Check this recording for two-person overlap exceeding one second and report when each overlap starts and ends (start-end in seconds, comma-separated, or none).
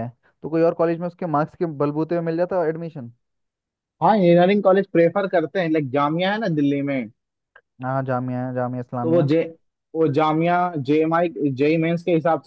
none